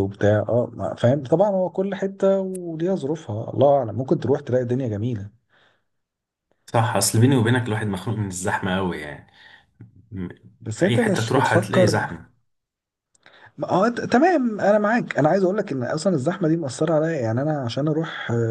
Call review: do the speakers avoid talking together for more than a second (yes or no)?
no